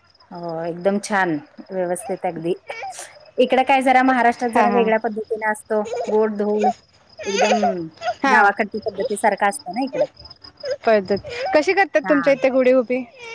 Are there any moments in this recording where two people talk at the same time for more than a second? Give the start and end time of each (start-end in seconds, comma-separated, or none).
none